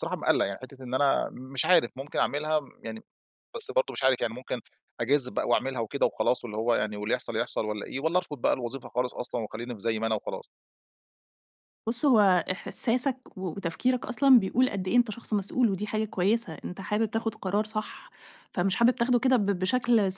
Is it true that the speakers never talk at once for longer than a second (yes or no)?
yes